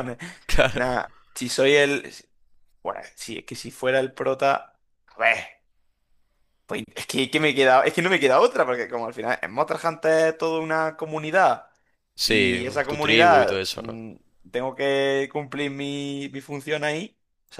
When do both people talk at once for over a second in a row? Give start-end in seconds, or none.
12.2-14.0